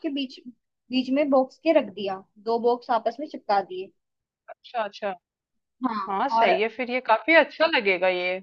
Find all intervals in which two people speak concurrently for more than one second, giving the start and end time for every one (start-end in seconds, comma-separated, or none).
none